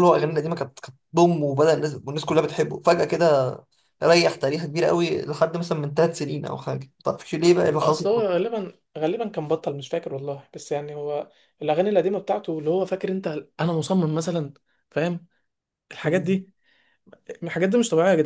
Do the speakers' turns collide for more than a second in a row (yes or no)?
no